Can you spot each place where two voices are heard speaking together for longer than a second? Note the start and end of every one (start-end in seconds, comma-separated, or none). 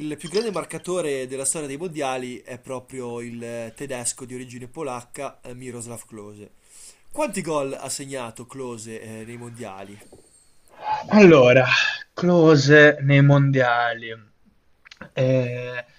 none